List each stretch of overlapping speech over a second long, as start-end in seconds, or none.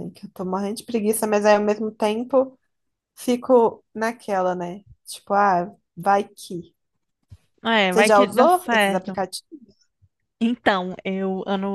7.9-9.2